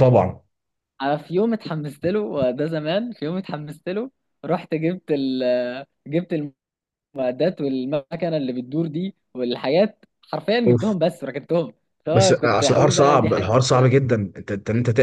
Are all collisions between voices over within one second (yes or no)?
no